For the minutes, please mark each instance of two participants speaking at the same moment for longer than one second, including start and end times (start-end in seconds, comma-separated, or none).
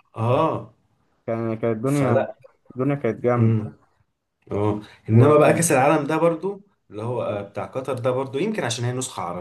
none